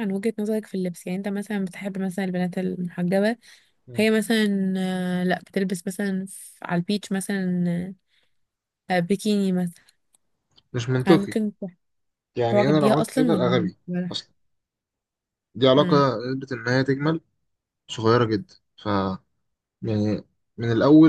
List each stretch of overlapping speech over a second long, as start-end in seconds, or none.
12.5-14.2